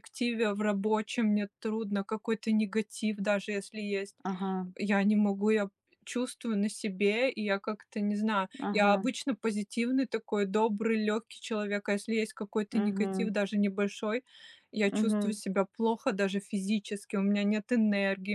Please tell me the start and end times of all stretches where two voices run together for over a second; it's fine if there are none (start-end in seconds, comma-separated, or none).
none